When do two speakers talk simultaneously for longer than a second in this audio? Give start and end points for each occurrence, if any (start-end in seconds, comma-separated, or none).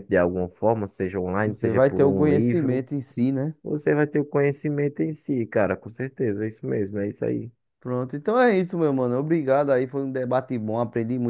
1.4-2.9